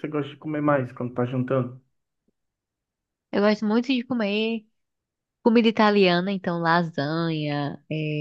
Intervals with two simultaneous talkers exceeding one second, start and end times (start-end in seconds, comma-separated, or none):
none